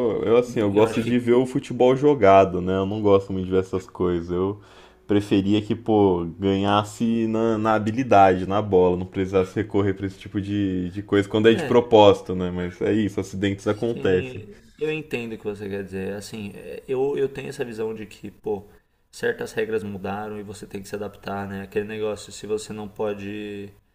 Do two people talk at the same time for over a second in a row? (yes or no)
no